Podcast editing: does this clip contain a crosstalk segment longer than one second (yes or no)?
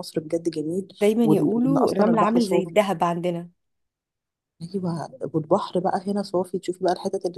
yes